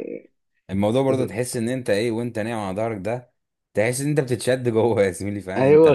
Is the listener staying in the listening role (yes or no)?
no